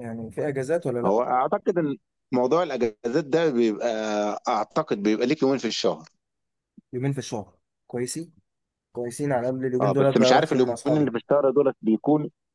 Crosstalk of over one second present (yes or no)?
yes